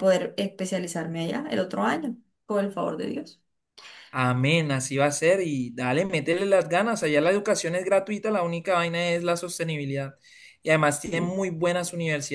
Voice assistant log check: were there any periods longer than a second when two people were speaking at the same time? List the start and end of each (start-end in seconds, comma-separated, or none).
none